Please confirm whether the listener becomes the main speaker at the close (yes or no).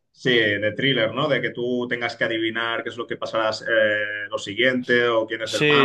yes